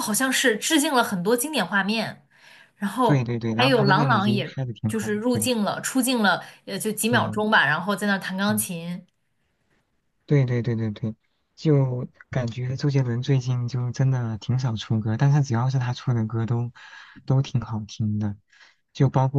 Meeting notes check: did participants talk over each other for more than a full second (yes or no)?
yes